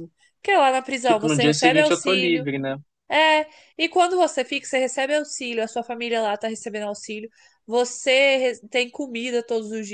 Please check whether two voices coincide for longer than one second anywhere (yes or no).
yes